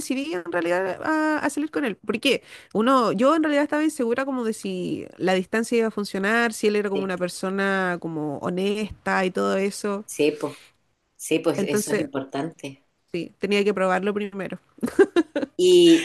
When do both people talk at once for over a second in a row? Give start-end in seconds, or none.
none